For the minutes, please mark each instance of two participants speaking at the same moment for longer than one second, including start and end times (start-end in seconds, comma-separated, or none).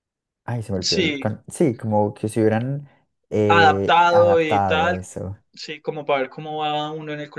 3.5-5.0